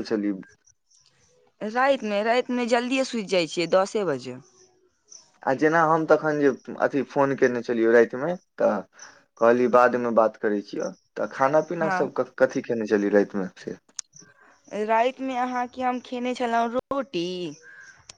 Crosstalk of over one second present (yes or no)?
no